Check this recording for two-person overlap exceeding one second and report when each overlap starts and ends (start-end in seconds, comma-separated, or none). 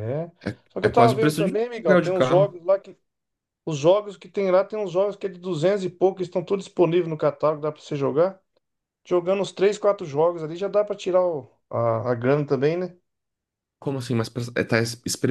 0.7-2.5